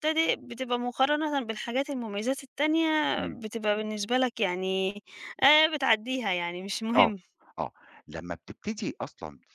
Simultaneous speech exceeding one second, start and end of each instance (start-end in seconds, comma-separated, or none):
none